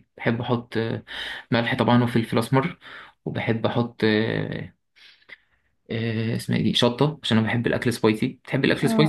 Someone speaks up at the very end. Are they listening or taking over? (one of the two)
taking over